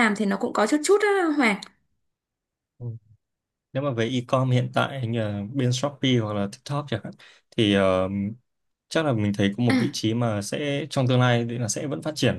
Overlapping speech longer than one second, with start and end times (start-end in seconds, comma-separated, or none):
none